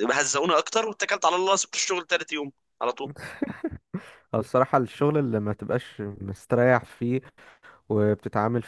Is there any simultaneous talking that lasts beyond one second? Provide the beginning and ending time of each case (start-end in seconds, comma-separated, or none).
none